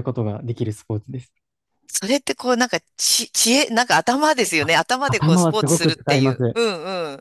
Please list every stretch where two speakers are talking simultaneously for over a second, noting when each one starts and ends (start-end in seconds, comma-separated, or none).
4.6-6.6